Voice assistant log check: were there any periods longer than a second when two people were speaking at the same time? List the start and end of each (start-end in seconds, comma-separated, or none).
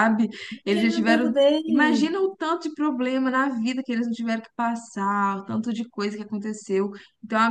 0.7-2.1